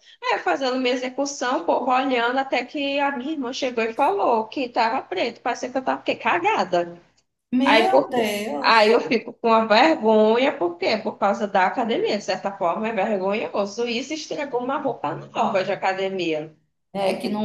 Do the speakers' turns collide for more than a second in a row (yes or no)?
yes